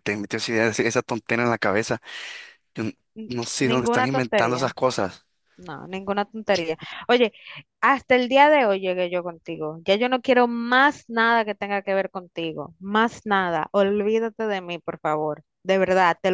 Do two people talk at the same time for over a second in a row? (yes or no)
yes